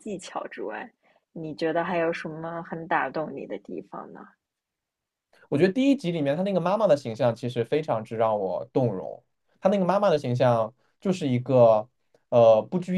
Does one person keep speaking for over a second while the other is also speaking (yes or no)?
no